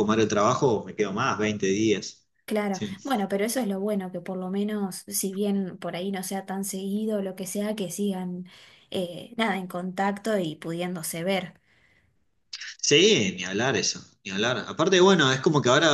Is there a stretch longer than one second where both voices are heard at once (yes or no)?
no